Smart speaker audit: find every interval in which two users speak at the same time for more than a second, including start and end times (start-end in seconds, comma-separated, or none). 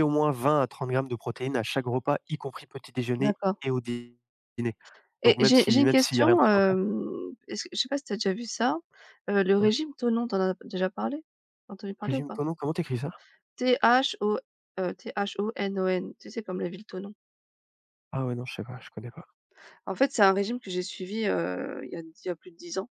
5.2-6.8